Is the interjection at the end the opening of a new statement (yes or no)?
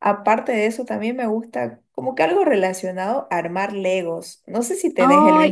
yes